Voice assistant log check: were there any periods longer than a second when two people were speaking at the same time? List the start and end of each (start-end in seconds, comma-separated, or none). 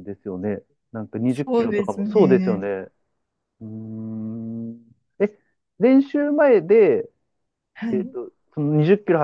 1.3-2.7